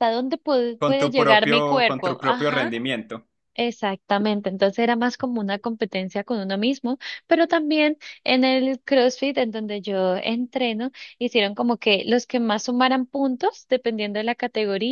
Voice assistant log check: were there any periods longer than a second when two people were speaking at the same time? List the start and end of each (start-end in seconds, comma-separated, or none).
0.8-2.7